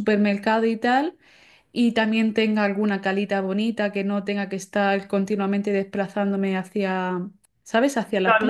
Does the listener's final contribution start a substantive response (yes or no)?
yes